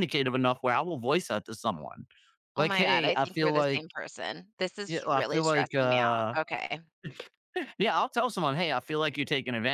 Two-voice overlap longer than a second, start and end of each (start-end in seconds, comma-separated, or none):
2.5-3.8, 4.9-6.4